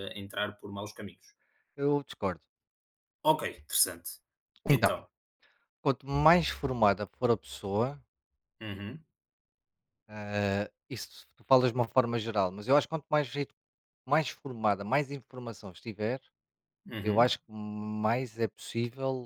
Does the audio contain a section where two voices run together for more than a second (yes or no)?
no